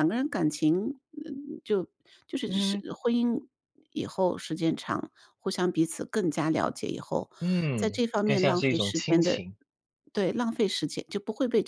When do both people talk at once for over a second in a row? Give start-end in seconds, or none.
7.8-9.4